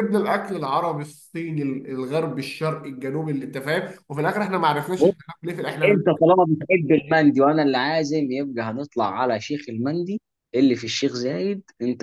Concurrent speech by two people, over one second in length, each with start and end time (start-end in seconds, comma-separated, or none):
none